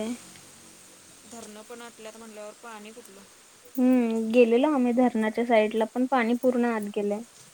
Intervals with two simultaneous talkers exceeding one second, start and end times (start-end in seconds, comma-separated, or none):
none